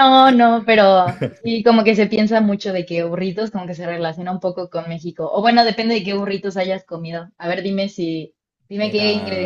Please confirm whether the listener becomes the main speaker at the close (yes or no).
no